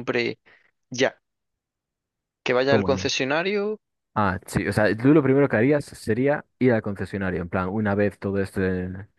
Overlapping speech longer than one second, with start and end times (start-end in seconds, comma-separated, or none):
none